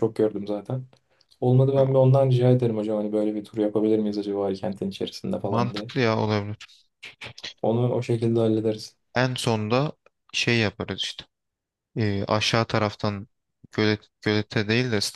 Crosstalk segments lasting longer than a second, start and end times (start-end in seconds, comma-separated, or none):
none